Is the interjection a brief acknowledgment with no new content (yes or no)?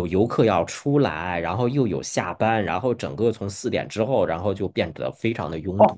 no